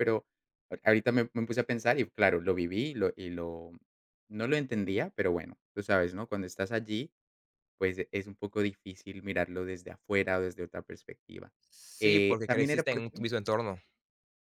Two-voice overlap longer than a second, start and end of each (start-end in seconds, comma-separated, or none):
12.0-13.2